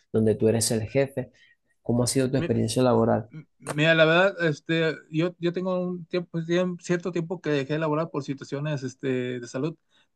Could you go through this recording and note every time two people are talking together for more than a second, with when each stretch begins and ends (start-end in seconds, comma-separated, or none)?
none